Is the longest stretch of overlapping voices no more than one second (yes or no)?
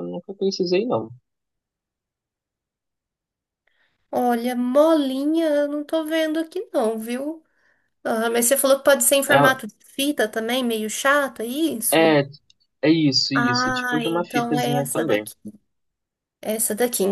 no